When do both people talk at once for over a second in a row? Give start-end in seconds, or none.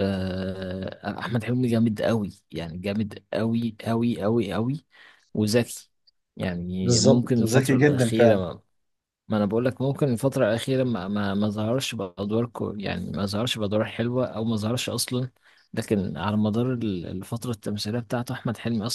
6.8-8.4